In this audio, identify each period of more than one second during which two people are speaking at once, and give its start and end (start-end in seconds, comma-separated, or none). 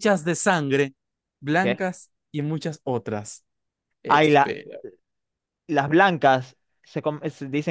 none